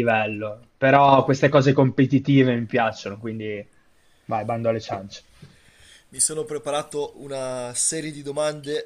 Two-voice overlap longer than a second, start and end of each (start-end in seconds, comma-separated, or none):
none